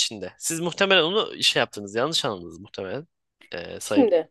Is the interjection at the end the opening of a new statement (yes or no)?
no